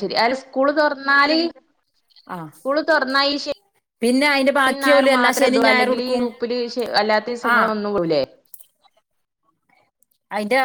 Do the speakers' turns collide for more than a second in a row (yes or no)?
yes